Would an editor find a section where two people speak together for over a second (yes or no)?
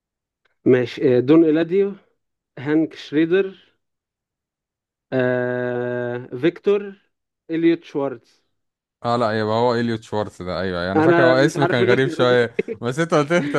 yes